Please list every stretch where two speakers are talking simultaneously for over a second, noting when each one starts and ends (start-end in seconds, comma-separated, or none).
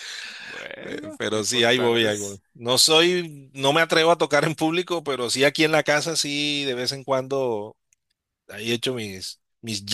0.9-2.4